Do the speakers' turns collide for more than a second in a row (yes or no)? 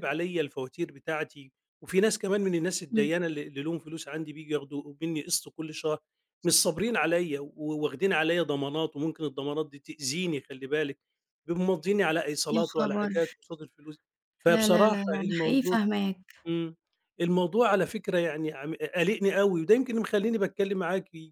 yes